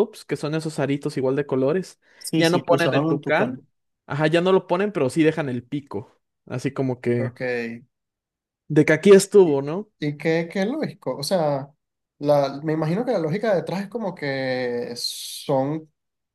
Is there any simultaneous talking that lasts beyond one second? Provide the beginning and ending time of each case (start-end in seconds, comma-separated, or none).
2.2-3.6